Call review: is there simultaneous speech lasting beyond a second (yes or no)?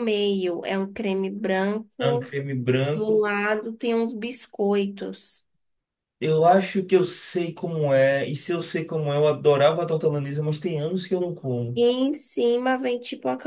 no